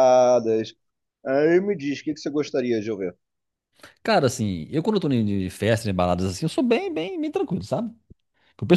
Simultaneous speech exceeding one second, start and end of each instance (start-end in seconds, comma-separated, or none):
none